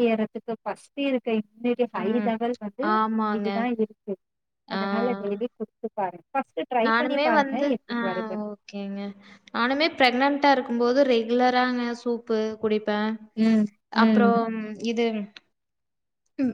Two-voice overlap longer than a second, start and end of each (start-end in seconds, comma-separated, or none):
none